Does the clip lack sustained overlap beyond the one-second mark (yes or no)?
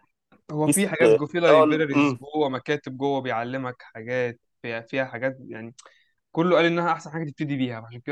no